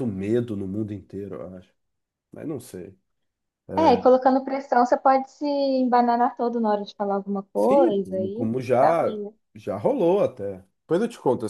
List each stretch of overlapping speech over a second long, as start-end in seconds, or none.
7.5-9.2